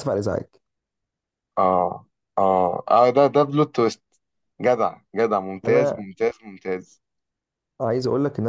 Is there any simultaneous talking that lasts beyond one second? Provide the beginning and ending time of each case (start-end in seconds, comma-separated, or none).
none